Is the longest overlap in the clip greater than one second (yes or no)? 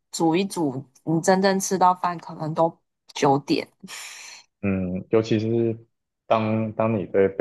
no